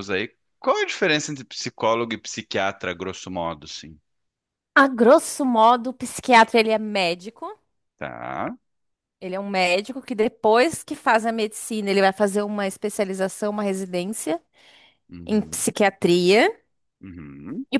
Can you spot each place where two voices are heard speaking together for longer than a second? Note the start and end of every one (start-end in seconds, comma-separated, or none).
none